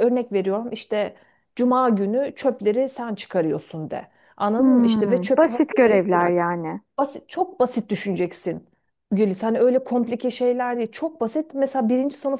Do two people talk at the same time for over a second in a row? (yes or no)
yes